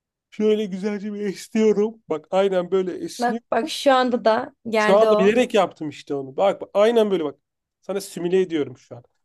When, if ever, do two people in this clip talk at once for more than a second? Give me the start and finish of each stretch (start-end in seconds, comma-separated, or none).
none